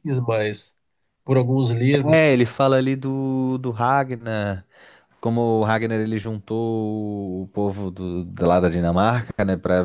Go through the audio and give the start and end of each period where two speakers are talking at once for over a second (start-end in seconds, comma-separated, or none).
none